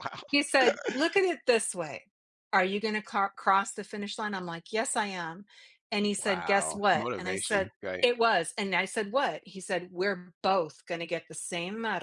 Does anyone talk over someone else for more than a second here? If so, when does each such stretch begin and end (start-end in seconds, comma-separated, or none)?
6.2-8.1